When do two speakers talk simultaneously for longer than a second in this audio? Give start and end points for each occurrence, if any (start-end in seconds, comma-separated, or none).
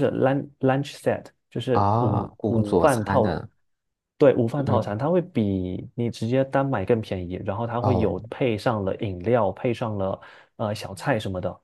1.7-3.4